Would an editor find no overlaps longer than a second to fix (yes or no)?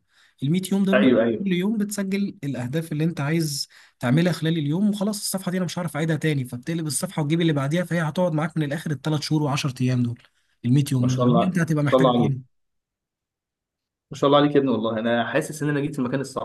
no